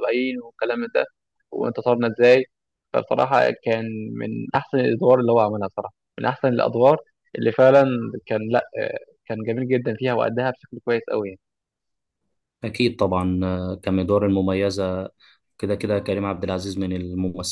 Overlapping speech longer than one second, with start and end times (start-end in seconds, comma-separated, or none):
none